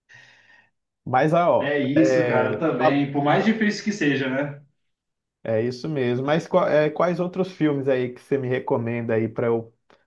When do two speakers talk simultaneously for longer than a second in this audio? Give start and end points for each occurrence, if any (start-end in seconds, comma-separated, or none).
1.6-3.0